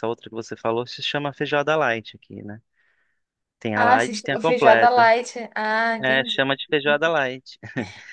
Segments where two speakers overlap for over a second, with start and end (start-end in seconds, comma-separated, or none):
3.7-5.1